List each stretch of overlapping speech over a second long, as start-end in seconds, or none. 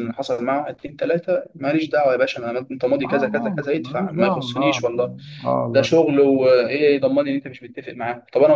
3.0-4.8